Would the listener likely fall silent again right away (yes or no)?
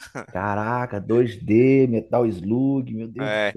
no